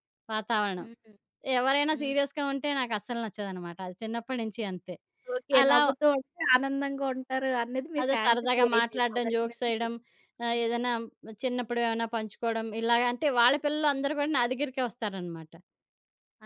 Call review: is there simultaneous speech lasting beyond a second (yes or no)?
yes